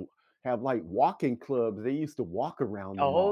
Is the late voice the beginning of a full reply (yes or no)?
yes